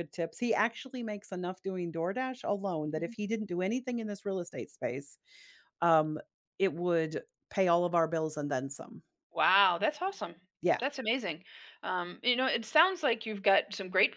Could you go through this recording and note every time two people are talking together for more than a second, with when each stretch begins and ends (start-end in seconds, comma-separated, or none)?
none